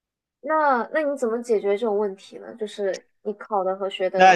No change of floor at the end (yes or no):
no